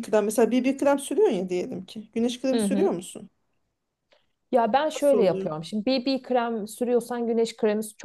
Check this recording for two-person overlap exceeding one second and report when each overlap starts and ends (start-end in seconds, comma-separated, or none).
none